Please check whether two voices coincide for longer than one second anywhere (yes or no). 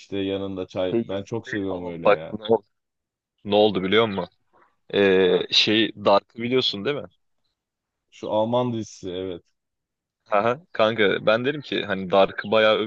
yes